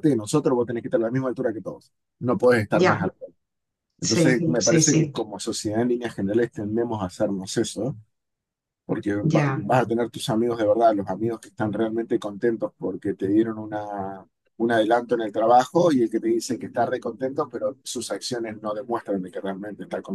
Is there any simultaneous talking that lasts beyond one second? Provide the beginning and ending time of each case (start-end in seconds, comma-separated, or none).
4.0-5.2